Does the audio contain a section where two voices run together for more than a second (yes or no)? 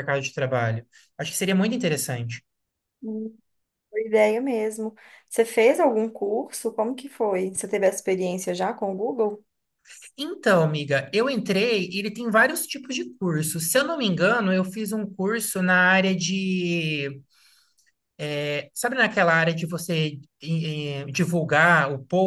no